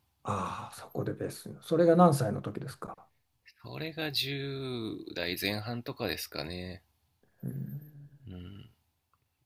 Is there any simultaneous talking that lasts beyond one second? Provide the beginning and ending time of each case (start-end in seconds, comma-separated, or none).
none